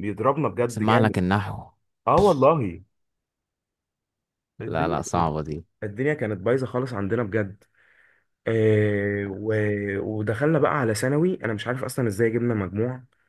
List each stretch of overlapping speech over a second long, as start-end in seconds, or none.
none